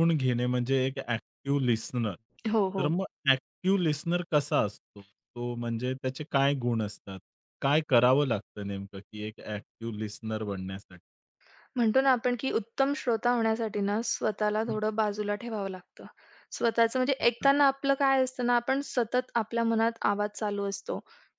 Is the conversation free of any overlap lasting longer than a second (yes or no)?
yes